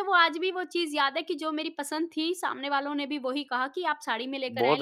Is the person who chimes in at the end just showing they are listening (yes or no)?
no